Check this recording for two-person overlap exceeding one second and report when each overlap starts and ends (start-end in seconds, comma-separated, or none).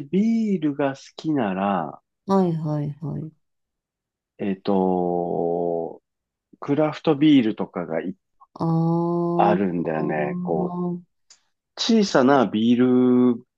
9.4-10.8